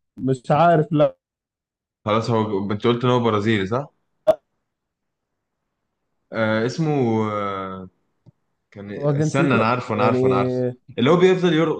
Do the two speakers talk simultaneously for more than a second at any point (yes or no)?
yes